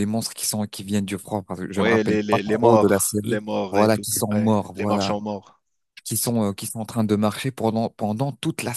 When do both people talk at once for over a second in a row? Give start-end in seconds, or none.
1.8-5.2